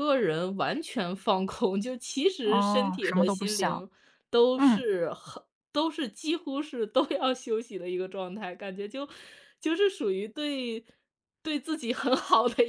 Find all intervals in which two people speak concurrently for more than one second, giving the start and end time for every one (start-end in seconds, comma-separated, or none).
2.4-3.8